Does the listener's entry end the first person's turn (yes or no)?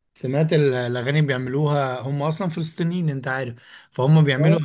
no